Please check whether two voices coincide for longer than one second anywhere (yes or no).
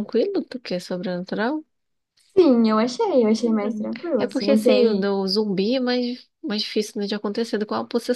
yes